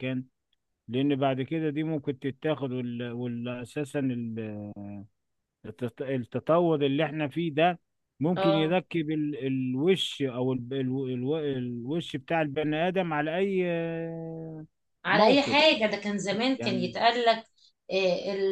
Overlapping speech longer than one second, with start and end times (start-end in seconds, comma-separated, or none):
none